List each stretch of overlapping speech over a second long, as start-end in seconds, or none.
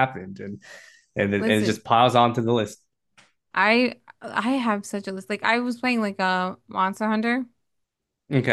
none